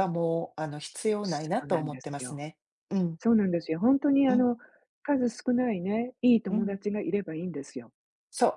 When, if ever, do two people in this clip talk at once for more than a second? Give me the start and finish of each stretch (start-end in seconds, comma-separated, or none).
1.2-2.4